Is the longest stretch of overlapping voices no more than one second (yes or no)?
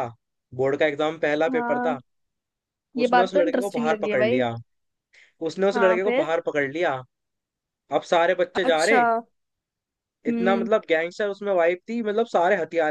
no